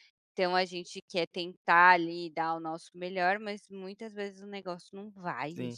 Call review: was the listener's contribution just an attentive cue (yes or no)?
no